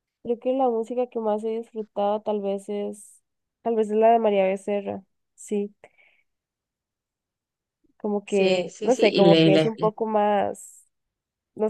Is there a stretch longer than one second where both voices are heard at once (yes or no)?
yes